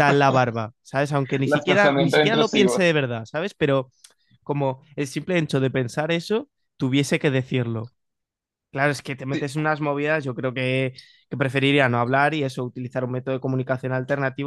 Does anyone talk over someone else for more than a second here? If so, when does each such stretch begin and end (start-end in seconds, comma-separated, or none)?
1.4-2.8